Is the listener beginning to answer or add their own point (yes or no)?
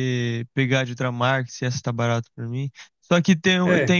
no